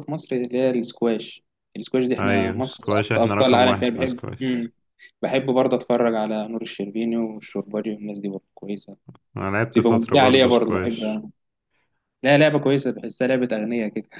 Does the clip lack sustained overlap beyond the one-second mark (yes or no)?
no